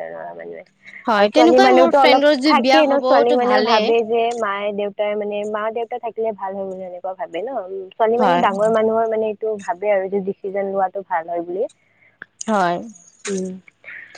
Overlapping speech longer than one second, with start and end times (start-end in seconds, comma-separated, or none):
1.2-3.9